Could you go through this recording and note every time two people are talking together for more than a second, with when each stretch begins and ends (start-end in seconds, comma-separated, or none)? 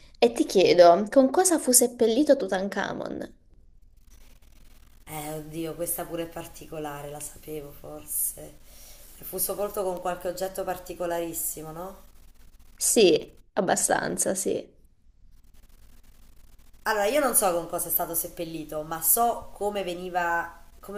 none